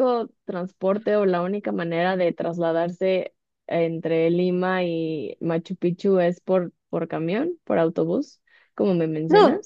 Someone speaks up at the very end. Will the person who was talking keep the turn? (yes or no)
no